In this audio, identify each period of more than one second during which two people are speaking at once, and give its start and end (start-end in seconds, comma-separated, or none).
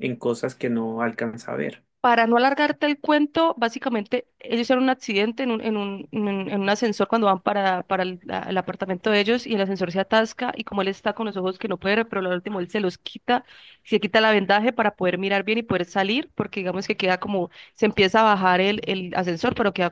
none